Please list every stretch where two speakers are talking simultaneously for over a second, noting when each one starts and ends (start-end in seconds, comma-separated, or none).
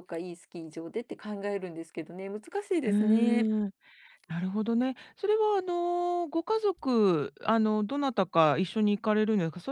none